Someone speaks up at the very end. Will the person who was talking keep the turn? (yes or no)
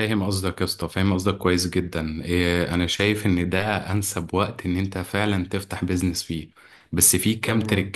yes